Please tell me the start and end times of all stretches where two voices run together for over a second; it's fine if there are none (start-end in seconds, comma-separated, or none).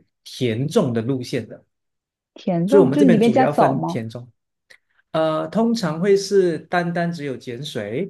2.7-4.0